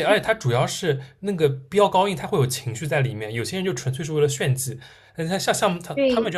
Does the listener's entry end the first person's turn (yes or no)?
no